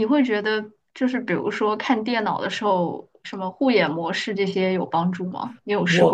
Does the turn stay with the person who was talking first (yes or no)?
no